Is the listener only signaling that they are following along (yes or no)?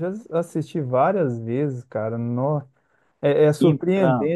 yes